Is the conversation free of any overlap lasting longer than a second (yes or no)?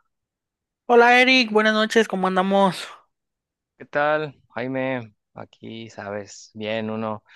yes